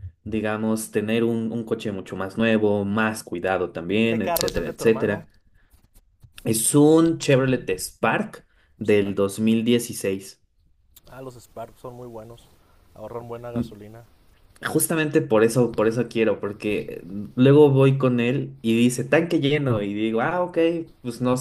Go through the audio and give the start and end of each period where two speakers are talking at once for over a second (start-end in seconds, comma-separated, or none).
4.1-5.3